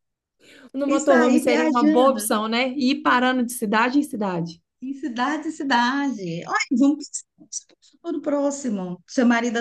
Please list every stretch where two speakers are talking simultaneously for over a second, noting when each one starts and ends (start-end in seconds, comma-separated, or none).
0.9-2.3